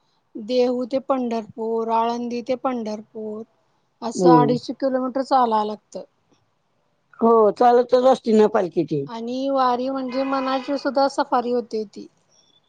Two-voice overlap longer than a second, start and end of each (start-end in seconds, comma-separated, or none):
none